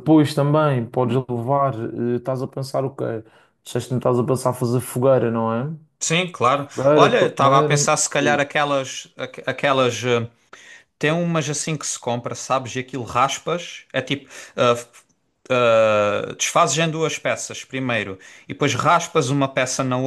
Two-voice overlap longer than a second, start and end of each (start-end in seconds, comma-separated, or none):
6.7-8.4